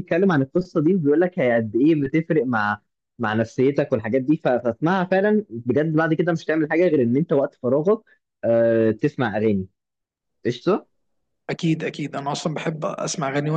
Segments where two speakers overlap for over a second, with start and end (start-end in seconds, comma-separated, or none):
none